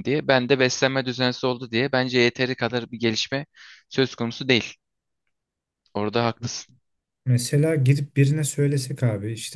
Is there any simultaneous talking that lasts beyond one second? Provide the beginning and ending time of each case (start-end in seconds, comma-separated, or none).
none